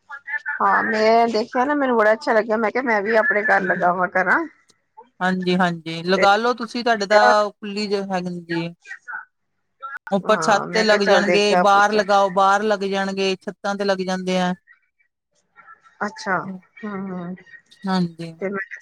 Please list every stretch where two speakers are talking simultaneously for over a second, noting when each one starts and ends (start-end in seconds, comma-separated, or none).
10.2-12.0